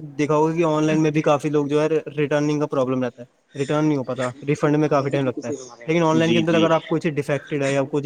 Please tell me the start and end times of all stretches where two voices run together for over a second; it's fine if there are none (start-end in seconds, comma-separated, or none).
4.2-6.0